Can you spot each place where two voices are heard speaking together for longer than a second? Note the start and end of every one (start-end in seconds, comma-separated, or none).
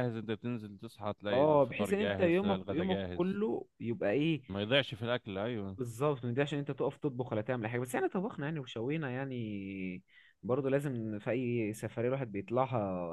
1.3-3.4